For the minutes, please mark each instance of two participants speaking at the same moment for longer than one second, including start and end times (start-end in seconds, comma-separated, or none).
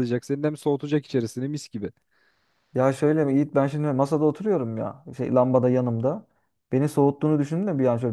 none